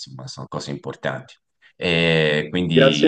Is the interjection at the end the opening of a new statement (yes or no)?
yes